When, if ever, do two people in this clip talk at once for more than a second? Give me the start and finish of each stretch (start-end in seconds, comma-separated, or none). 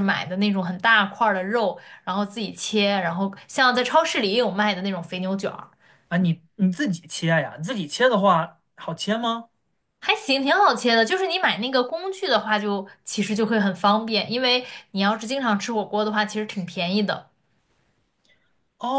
none